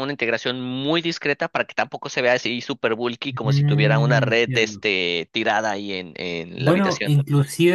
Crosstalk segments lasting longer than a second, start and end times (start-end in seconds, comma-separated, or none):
3.4-4.8